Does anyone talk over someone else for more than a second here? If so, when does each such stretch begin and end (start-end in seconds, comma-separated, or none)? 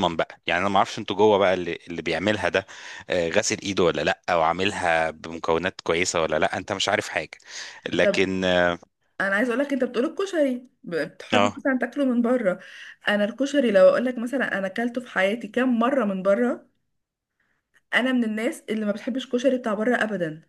none